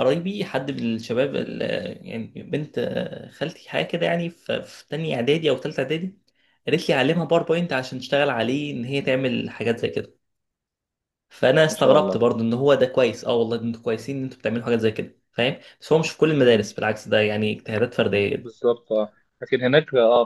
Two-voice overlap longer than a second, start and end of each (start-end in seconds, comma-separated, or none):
none